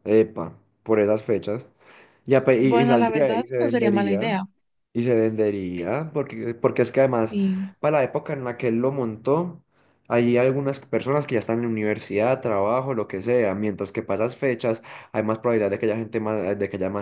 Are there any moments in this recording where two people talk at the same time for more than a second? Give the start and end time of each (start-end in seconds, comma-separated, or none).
2.6-4.4